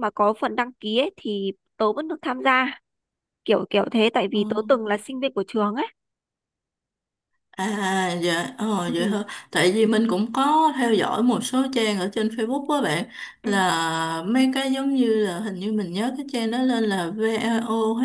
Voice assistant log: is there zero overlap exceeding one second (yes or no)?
yes